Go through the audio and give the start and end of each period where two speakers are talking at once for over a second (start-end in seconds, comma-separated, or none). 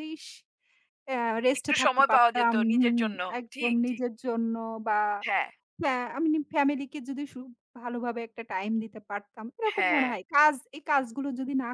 1.6-4.0